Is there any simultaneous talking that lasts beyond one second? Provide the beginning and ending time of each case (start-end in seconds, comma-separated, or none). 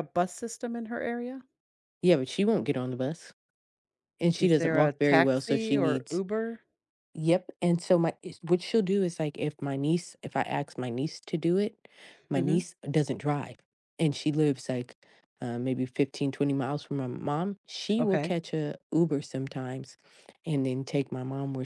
4.4-6.2